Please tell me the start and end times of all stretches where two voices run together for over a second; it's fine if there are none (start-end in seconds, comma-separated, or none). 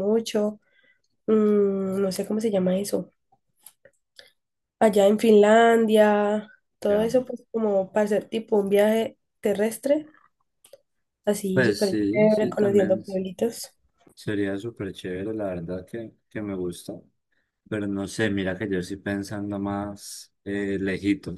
11.5-13.0